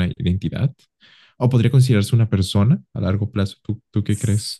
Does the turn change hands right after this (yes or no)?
yes